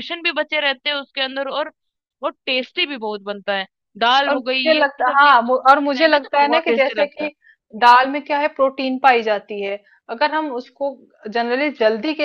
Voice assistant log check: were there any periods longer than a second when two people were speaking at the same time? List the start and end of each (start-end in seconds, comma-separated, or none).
4.3-7.3